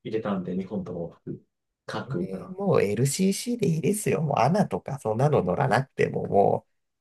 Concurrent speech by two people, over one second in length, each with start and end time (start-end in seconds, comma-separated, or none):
none